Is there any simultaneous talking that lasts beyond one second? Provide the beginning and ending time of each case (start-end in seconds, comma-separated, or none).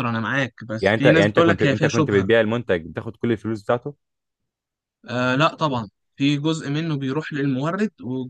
0.8-2.3